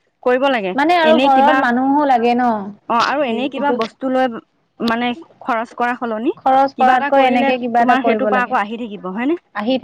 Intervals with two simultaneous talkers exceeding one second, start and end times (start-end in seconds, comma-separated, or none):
6.4-8.6